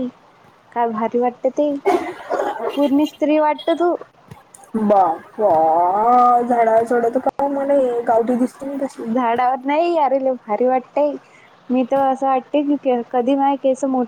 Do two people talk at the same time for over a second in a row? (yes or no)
no